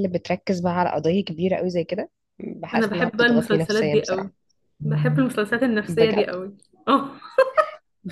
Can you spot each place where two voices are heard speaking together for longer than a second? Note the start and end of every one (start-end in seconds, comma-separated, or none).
2.7-4.3